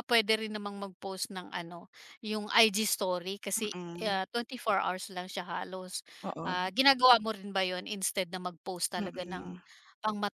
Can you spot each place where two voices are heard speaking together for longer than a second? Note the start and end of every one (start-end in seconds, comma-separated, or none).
none